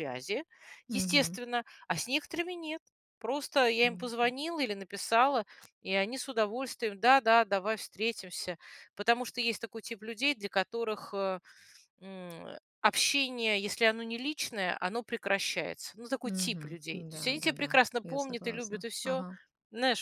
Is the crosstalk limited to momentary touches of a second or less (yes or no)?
no